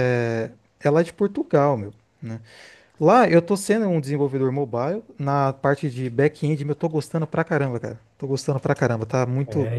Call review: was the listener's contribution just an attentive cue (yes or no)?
no